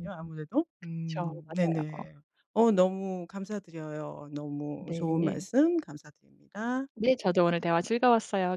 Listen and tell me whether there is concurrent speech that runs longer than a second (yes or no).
yes